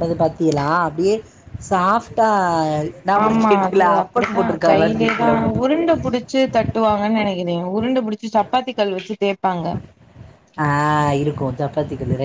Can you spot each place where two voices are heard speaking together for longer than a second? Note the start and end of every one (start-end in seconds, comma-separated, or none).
3.2-5.6